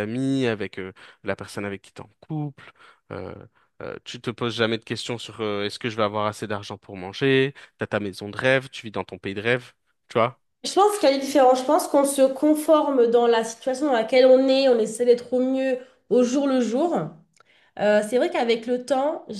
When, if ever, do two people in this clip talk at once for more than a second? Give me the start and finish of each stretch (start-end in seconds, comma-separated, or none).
none